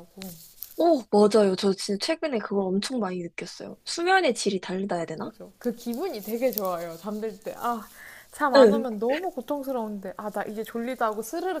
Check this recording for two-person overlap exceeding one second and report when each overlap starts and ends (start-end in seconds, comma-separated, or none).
none